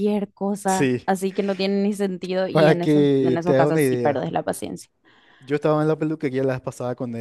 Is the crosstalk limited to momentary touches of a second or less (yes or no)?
no